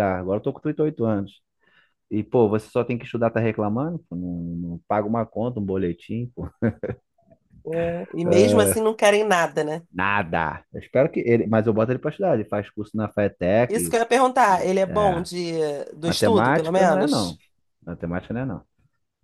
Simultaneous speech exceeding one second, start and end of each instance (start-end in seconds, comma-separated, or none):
16.0-17.4